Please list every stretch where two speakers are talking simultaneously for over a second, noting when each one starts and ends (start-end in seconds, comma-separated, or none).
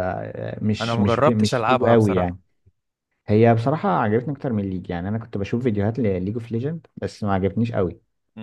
0.8-2.4